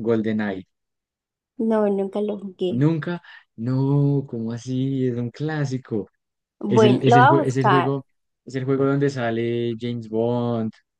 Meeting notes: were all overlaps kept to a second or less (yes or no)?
no